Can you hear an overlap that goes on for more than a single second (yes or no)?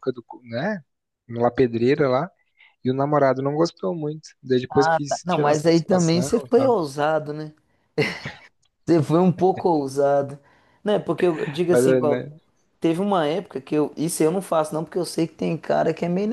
yes